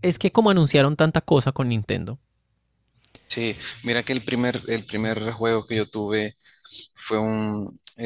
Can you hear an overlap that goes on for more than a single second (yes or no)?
no